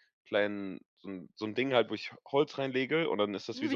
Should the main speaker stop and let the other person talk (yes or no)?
no